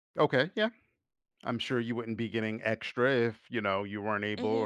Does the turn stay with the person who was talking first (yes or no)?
no